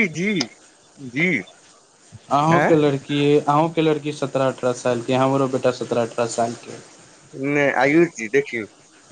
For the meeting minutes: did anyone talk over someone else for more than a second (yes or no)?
no